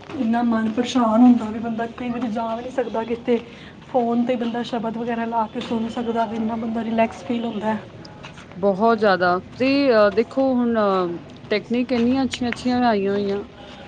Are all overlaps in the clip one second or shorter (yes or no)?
yes